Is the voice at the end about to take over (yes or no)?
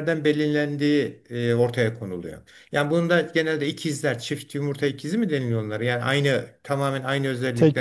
no